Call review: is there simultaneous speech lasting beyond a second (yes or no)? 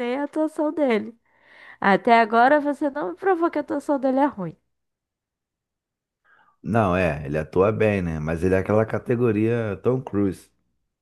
no